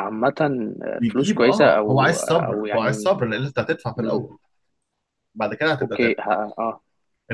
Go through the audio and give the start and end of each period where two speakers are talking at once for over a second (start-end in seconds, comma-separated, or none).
1.0-3.1